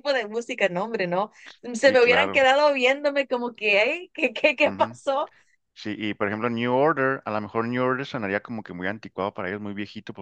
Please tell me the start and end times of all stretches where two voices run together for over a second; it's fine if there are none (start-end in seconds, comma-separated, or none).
none